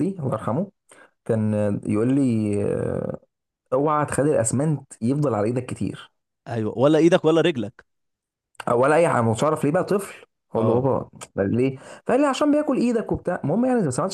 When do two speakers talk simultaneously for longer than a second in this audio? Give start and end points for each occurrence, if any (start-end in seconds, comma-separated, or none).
none